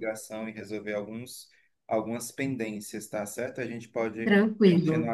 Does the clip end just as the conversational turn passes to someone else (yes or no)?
no